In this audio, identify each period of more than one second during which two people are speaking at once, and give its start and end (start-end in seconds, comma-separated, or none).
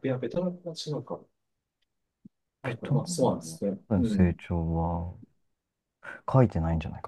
2.6-4.4